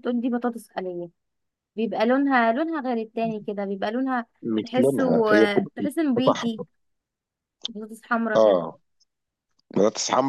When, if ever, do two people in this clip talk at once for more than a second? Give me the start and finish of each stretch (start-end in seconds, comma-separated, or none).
4.6-6.6